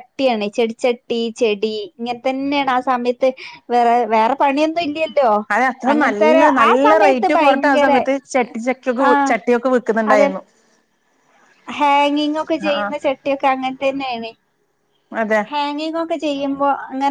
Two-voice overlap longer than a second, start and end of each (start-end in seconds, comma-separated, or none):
5.9-7.9